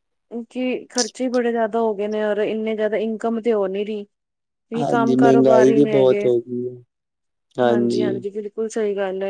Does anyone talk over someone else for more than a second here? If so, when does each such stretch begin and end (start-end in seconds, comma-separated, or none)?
4.8-6.3